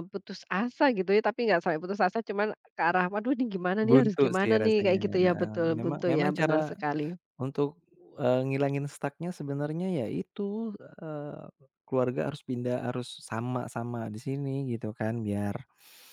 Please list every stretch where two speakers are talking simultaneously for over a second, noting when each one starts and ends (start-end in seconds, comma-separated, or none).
3.8-6.7